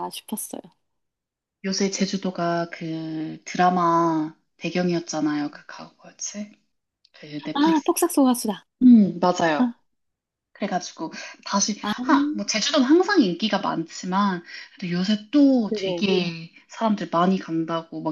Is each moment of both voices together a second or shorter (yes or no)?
yes